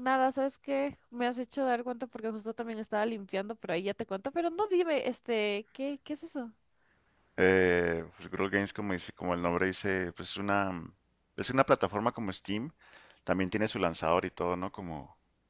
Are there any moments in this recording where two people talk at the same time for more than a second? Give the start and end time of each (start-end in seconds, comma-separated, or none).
none